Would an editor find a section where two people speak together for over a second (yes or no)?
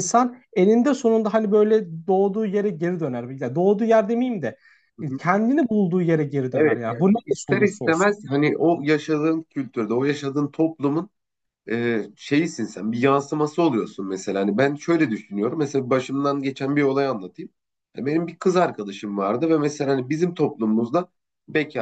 yes